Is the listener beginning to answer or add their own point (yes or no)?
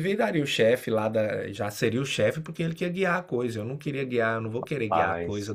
no